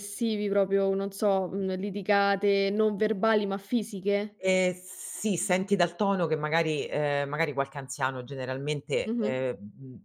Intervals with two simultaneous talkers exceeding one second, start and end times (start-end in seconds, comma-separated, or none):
none